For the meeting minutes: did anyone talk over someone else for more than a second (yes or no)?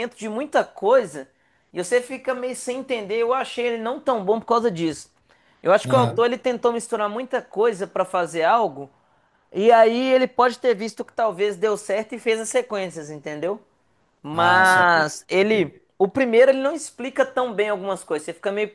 yes